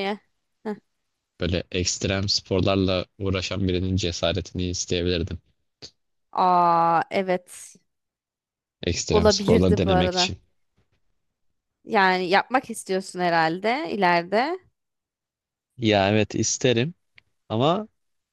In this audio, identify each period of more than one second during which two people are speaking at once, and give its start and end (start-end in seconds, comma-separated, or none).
9.1-10.3